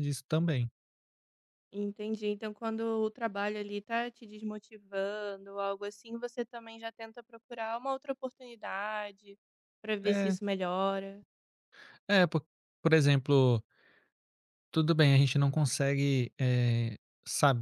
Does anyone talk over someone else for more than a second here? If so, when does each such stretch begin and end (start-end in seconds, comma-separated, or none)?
none